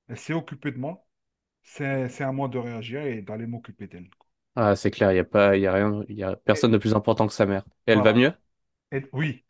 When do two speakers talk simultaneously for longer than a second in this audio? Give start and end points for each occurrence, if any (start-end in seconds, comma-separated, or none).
none